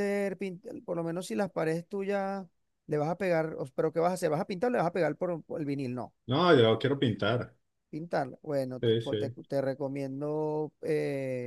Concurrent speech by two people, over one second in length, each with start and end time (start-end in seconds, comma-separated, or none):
none